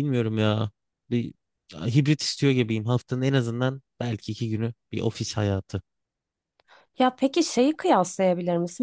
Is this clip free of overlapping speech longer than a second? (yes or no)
yes